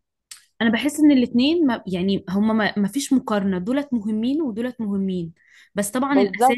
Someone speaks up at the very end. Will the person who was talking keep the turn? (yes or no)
yes